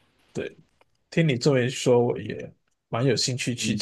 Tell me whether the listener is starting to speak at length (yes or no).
yes